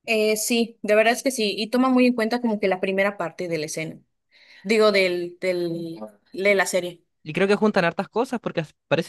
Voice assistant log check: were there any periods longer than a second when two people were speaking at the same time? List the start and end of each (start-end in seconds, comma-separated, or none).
none